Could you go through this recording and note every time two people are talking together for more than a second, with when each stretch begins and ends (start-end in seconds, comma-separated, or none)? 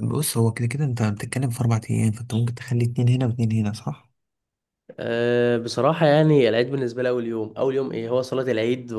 none